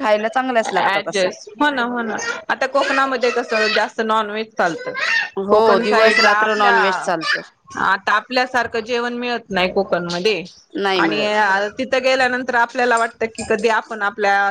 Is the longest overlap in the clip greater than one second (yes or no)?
yes